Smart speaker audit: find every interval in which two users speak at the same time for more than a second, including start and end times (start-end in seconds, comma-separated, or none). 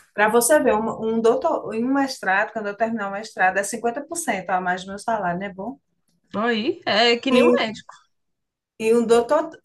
none